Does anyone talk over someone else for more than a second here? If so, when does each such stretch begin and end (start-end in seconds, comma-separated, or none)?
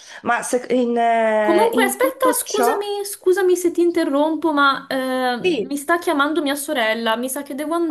1.4-2.9